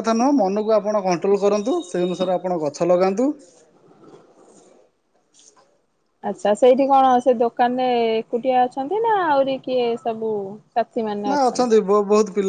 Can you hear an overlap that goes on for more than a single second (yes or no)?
no